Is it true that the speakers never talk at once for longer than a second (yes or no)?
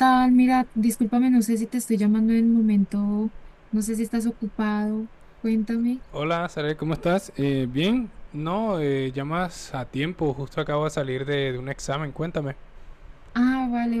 yes